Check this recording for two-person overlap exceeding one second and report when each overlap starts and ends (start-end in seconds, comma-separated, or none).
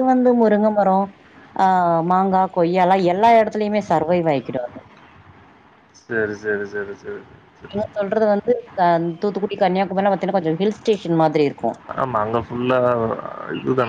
none